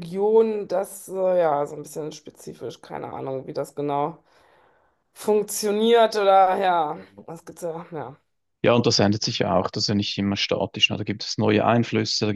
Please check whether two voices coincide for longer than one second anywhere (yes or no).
no